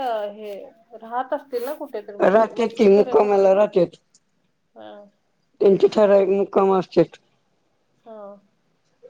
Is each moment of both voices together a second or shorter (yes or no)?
no